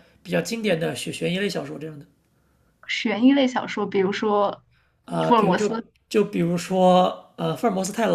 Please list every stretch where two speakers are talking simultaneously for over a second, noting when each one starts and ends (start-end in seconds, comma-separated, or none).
none